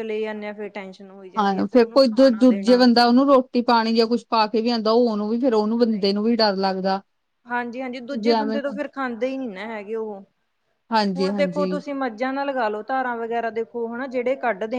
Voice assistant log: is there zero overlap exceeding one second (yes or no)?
no